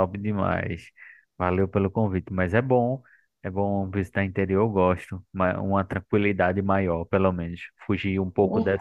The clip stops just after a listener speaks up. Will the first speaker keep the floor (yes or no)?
yes